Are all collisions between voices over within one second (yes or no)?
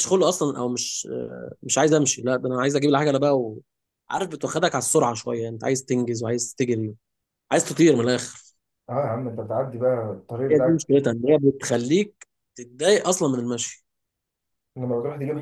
yes